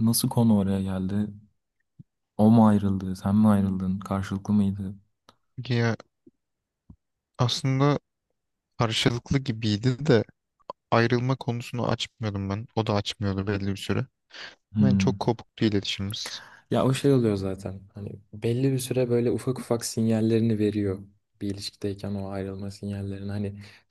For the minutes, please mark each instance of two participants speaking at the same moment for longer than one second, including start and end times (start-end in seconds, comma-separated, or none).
none